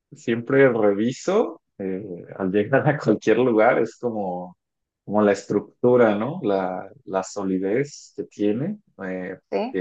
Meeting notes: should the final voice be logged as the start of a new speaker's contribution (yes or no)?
no